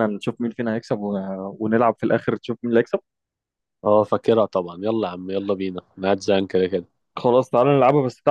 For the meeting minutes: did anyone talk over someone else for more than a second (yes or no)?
no